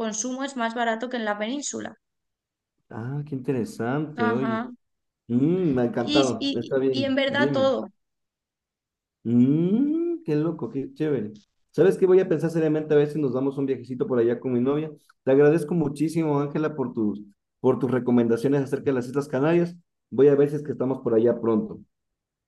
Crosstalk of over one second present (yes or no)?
yes